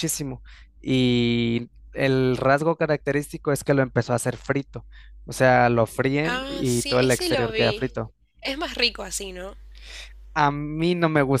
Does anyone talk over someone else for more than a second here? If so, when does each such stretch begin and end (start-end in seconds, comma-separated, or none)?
6.2-7.8